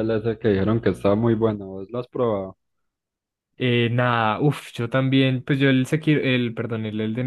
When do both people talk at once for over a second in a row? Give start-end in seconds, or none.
none